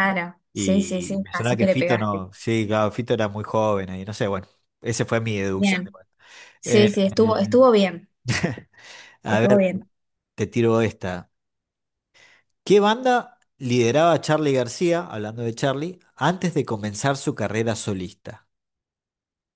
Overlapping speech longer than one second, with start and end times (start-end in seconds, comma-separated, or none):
0.5-2.3